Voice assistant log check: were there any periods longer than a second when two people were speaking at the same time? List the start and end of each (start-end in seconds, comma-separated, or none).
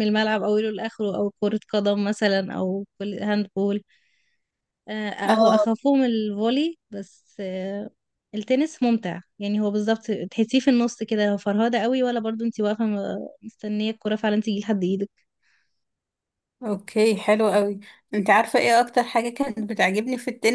none